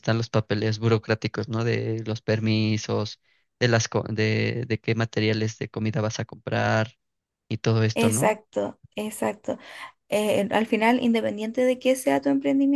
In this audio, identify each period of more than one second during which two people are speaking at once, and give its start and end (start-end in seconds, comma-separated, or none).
none